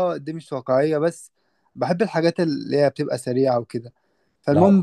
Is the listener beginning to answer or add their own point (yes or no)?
no